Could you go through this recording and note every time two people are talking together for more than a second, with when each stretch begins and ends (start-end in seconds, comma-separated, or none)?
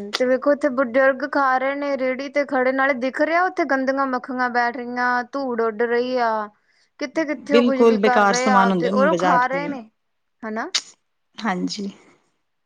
7.5-9.7